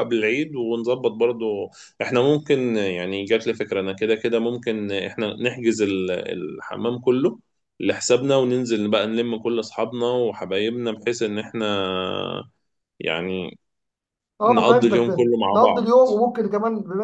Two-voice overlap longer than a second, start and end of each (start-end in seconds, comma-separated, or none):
14.5-15.9